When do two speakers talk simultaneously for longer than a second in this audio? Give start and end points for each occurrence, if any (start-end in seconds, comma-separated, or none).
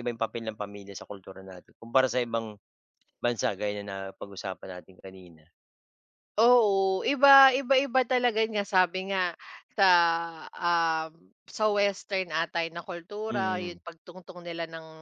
none